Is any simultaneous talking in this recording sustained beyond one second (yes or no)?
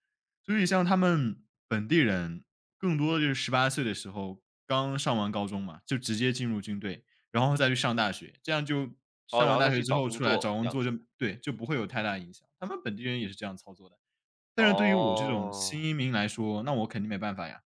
yes